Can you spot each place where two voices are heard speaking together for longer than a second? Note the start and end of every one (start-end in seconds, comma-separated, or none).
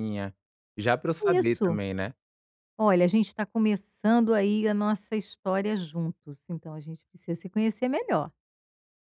none